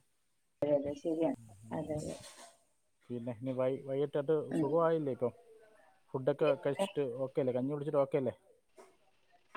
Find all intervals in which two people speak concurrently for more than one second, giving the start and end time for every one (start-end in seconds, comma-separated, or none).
none